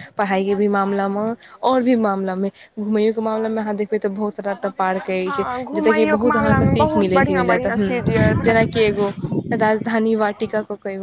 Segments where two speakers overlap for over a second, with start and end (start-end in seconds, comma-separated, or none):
5.2-8.6